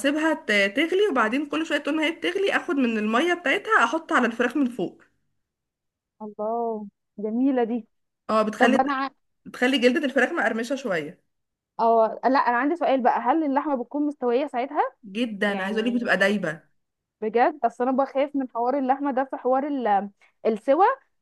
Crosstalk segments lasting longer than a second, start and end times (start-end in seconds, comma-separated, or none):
none